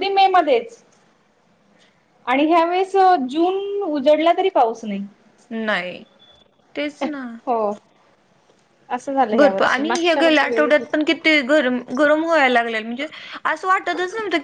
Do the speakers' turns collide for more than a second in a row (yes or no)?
yes